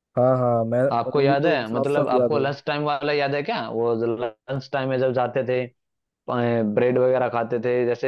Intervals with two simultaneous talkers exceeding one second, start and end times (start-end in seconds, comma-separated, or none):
1.2-2.5